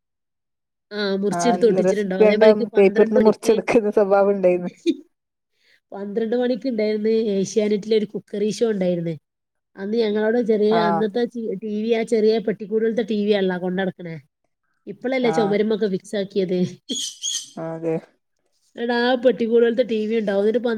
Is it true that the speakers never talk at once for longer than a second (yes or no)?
no